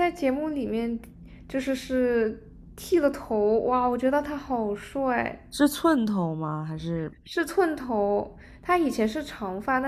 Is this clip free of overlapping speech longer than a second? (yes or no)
yes